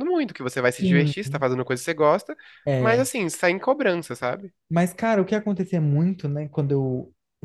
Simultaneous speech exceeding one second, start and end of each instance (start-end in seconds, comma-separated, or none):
none